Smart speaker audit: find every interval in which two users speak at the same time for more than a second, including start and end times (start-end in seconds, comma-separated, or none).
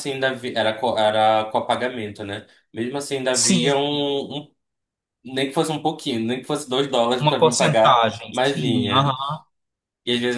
7.2-9.1